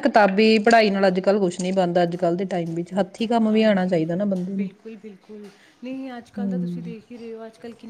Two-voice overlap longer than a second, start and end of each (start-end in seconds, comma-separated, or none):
none